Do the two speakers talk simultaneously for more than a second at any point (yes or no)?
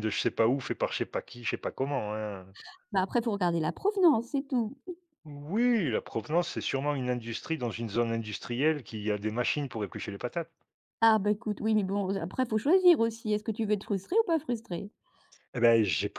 no